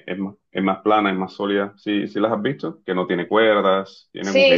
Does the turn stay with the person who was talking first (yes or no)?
no